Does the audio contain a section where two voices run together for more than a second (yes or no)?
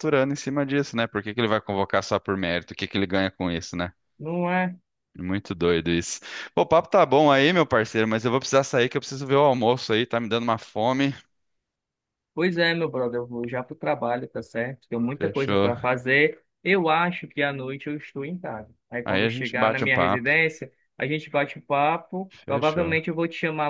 yes